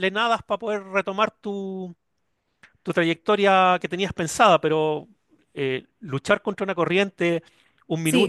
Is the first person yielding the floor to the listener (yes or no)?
no